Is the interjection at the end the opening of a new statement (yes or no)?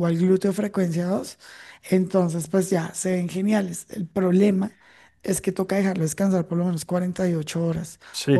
yes